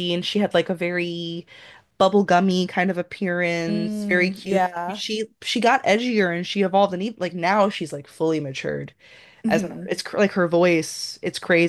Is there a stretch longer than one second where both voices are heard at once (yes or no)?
yes